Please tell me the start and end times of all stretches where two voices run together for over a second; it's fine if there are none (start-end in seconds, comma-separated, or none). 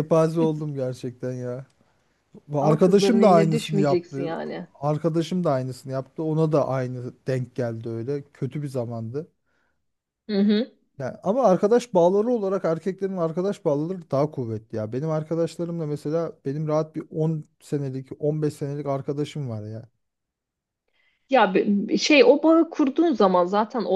2.6-4.3